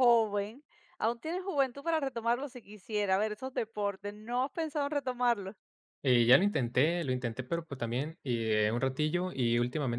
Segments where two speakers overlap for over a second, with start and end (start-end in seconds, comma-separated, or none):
none